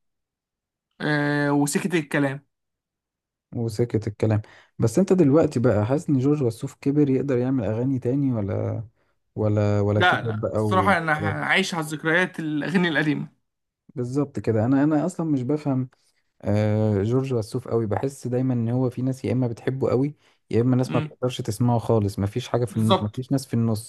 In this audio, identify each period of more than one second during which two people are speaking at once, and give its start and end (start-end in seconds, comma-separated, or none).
10.0-11.5